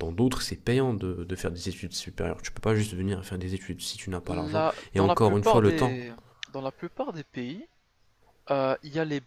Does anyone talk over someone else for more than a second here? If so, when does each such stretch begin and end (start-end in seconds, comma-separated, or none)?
4.3-6.0